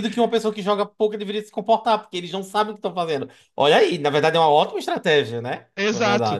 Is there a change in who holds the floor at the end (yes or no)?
yes